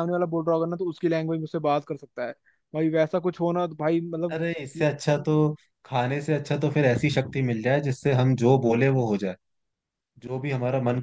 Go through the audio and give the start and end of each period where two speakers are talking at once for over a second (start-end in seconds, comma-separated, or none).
none